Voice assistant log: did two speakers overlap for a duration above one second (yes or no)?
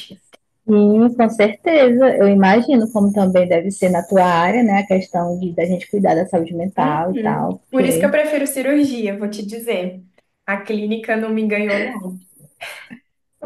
yes